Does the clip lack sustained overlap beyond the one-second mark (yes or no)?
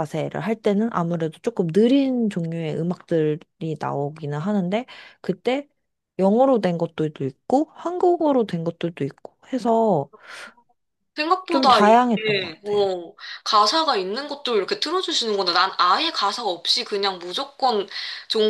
no